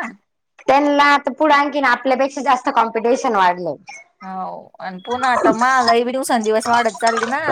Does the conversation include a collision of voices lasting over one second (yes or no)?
no